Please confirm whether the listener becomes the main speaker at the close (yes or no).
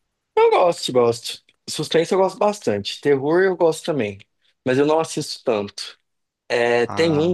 no